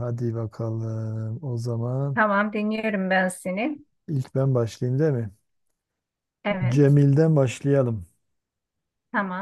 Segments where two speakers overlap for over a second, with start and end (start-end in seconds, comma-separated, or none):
none